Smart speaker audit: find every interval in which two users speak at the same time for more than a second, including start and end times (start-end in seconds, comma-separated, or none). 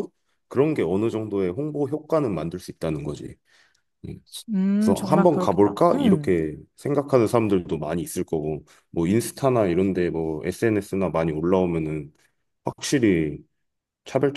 4.8-6.3